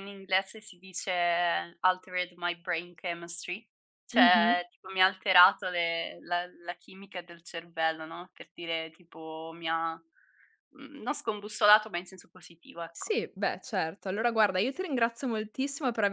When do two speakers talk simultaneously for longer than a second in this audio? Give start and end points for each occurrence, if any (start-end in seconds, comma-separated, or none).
none